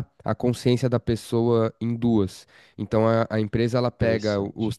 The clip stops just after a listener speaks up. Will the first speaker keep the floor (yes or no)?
yes